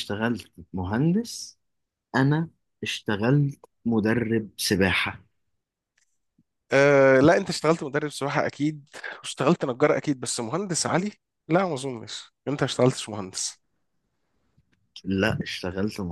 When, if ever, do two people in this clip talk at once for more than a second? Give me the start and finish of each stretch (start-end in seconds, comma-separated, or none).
none